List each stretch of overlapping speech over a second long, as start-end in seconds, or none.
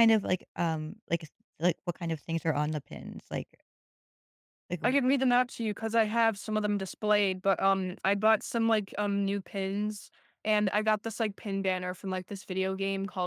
none